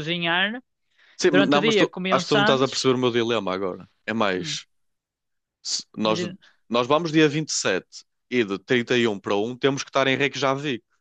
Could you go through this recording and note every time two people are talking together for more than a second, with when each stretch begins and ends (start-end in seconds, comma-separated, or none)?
1.3-2.9